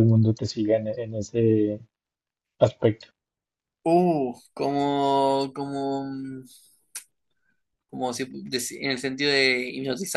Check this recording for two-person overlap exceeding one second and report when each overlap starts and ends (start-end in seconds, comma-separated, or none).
none